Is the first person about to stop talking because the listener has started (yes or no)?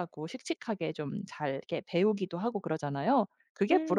yes